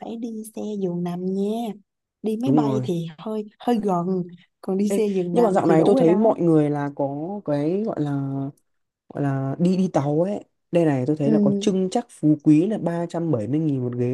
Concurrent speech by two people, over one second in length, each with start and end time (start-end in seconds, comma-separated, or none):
4.9-6.3